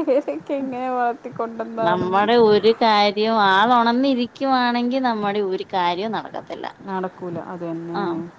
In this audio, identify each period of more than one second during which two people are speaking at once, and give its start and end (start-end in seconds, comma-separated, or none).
none